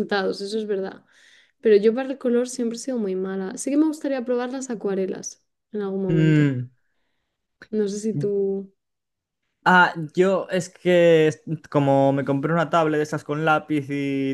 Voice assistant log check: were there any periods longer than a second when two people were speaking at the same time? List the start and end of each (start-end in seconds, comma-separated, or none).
none